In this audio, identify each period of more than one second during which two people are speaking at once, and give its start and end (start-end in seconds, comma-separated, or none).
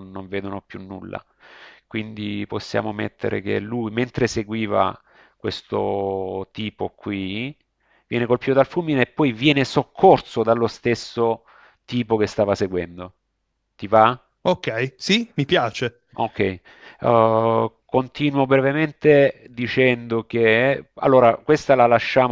none